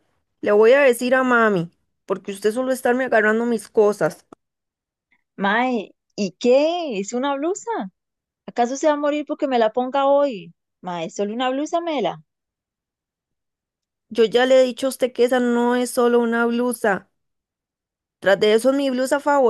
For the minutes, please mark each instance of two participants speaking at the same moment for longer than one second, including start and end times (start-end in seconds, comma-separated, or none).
none